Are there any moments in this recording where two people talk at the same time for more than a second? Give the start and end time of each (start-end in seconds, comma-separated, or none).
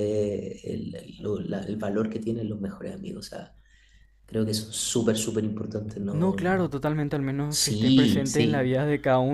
7.5-8.7